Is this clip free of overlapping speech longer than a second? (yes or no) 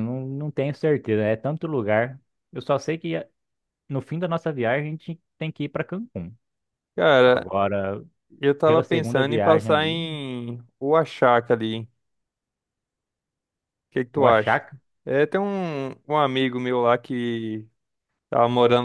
no